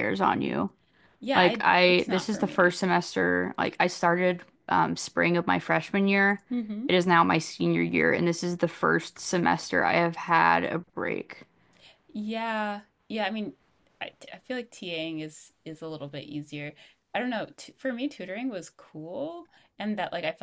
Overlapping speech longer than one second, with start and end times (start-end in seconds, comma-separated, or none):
1.3-2.7